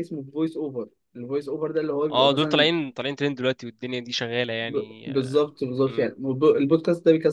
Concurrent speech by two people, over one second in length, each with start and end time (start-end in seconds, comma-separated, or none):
none